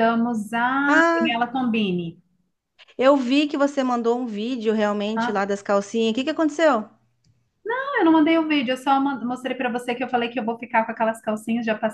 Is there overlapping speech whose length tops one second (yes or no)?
no